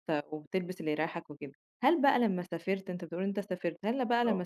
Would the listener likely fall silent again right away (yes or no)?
yes